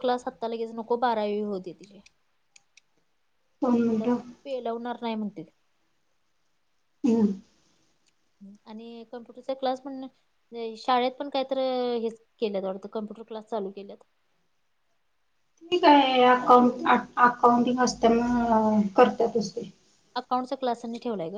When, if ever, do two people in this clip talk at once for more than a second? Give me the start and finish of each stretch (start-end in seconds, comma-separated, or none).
none